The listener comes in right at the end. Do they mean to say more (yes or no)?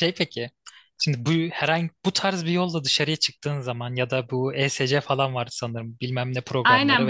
yes